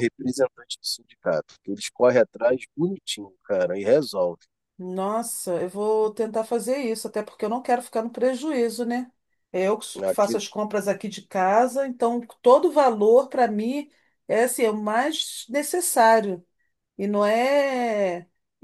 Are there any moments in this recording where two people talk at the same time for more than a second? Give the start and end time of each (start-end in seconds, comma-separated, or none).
none